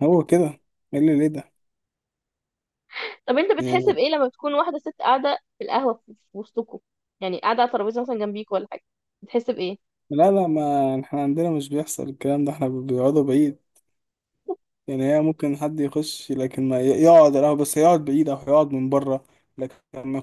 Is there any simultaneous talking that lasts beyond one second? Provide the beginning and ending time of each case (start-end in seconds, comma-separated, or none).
none